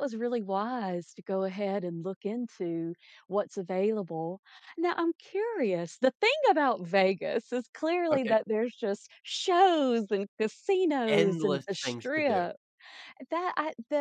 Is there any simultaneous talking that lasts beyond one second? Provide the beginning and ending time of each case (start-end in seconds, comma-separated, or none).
11.1-12.5